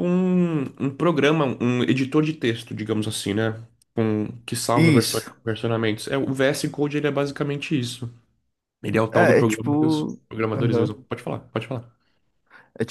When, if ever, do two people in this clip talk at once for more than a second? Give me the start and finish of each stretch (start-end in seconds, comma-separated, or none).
9.1-10.9